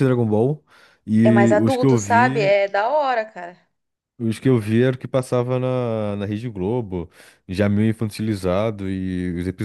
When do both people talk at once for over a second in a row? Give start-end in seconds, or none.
1.2-2.6